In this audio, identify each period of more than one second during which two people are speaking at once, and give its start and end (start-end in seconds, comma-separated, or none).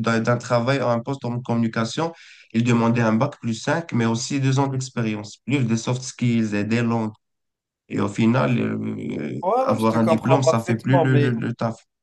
9.4-11.5